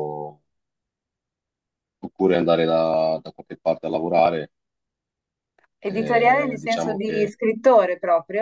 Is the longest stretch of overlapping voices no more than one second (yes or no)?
no